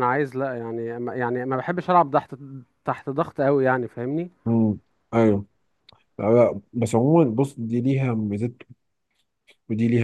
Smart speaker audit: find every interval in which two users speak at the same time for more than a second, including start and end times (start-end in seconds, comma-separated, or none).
none